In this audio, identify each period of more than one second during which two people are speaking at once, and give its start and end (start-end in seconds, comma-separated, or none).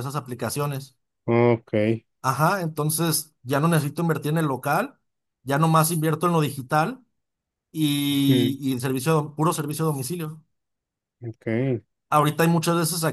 none